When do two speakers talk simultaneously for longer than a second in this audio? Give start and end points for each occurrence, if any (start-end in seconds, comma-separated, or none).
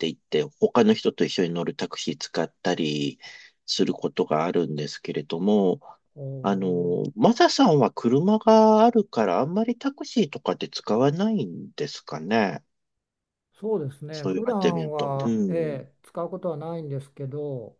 14.1-15.5